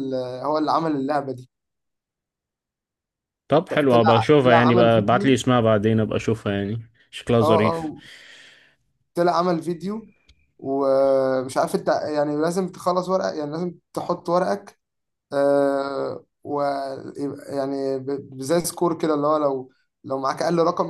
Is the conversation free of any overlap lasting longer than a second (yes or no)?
no